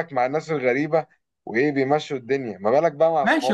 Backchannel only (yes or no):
no